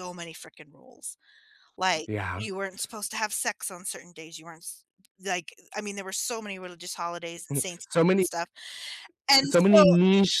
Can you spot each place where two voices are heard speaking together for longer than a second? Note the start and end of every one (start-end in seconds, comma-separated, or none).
none